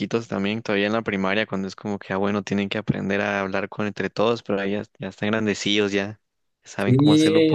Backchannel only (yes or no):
no